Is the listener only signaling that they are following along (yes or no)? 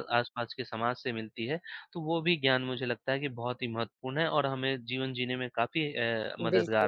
no